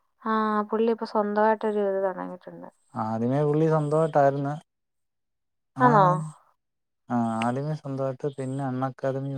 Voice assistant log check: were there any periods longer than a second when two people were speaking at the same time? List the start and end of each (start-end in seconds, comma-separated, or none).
none